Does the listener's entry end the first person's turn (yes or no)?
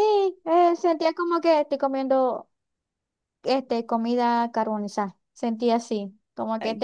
no